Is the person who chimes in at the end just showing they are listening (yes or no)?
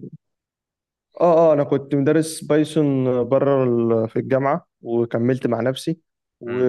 yes